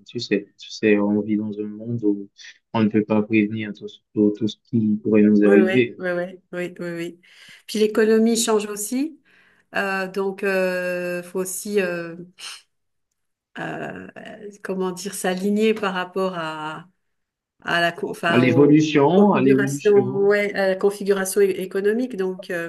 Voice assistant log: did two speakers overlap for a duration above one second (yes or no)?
yes